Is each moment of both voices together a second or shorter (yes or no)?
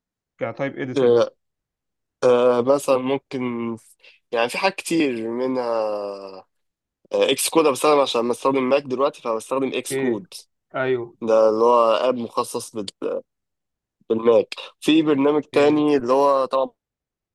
yes